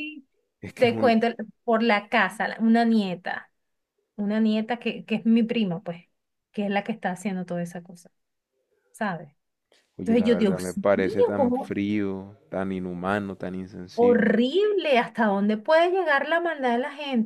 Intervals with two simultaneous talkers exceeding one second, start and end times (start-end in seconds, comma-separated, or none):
10.0-11.8